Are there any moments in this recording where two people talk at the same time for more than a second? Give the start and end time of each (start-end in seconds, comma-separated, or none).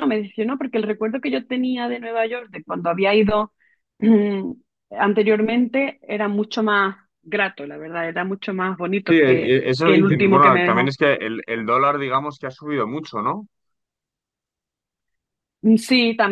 9.1-10.9